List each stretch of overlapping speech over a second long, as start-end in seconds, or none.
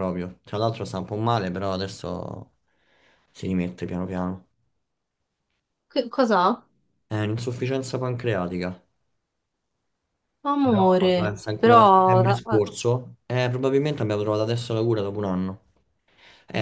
10.6-12.6